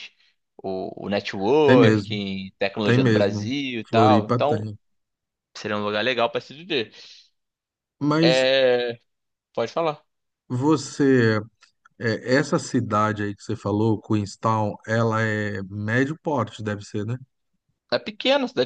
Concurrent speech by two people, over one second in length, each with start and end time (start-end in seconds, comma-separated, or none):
2.8-4.7